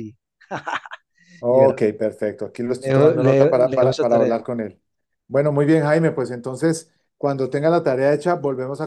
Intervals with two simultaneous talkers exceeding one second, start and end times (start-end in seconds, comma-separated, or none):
2.8-4.4